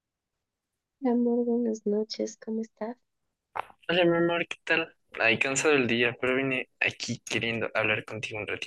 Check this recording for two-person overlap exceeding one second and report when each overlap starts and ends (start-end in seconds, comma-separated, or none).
none